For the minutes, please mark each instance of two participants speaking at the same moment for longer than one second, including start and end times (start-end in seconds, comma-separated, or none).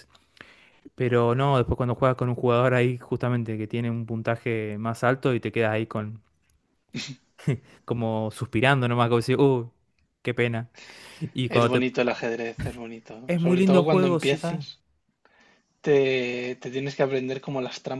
13.3-14.7